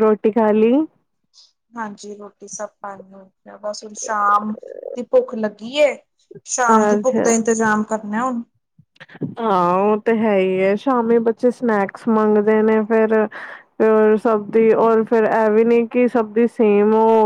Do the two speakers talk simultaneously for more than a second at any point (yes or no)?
no